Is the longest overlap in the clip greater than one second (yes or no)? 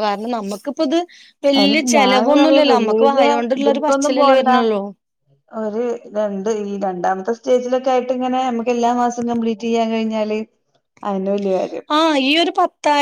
yes